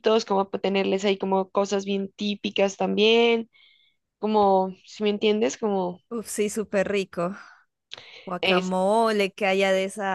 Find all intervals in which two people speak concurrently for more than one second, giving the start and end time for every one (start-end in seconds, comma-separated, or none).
none